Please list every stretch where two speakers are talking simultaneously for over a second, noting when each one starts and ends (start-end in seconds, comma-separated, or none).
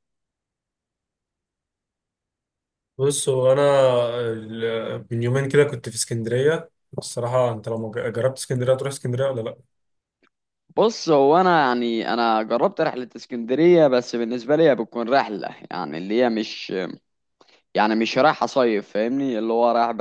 none